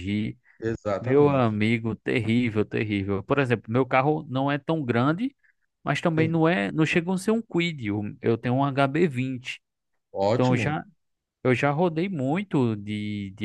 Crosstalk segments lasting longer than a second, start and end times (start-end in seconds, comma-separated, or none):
none